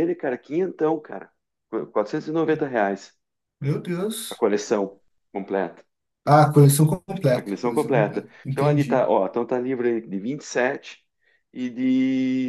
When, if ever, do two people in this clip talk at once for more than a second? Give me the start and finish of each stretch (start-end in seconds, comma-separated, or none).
7.3-9.1